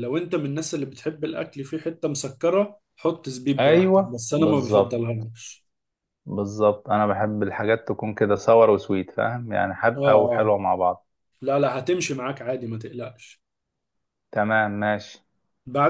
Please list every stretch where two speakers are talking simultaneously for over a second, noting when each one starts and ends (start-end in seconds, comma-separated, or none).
3.6-5.0